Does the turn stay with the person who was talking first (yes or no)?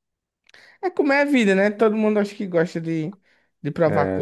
no